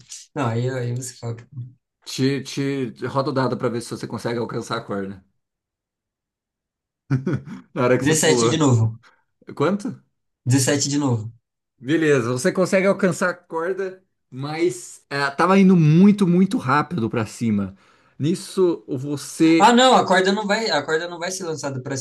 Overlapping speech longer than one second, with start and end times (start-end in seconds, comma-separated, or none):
none